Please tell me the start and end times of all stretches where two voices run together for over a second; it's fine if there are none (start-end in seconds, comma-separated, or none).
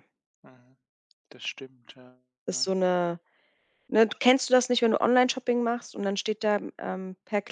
none